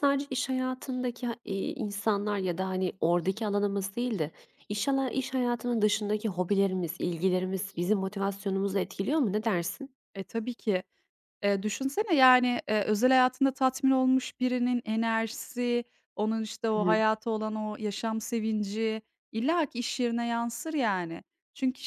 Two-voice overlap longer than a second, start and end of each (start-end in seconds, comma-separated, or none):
none